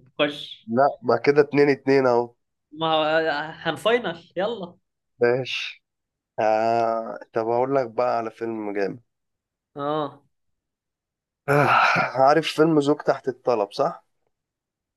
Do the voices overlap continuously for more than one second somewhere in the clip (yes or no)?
no